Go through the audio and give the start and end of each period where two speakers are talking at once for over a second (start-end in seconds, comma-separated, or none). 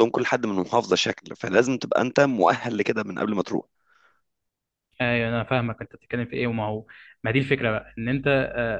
none